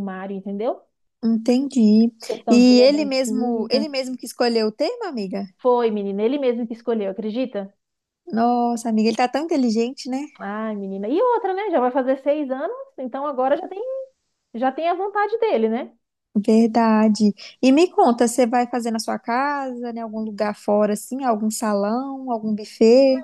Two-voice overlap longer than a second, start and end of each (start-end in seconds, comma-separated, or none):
2.5-3.9